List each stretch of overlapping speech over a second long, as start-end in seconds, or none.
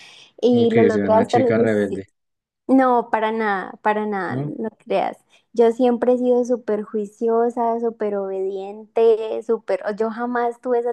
0.5-2.1